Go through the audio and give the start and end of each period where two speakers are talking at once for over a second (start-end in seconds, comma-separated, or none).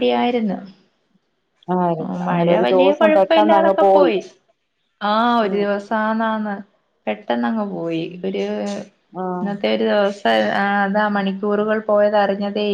2.3-3.7